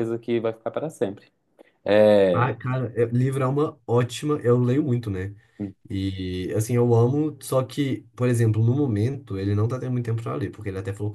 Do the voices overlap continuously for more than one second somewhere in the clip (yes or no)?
no